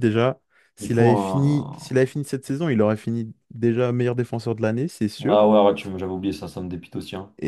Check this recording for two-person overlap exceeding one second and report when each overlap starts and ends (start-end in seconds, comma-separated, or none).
0.8-2.1